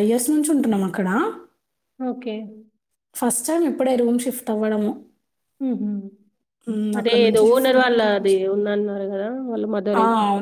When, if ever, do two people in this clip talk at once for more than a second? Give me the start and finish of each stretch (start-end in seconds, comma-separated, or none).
7.0-8.3